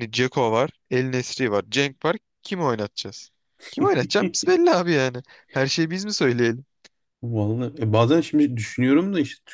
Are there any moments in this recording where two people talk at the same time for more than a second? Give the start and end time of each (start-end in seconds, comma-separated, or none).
none